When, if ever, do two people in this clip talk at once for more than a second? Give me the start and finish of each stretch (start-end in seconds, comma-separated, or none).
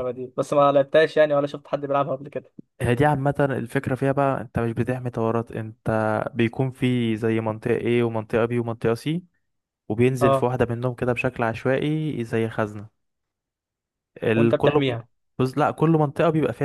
none